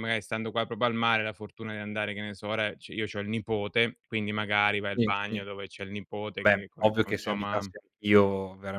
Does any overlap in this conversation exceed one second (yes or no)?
yes